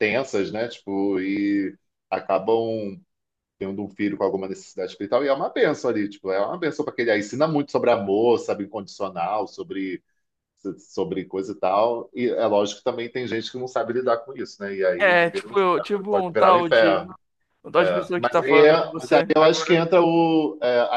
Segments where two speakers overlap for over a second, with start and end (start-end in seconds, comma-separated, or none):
15.0-17.1, 17.8-19.8